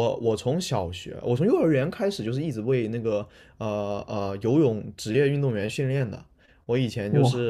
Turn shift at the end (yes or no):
no